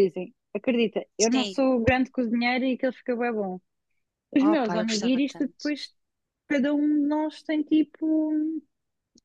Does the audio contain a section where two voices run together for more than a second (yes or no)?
yes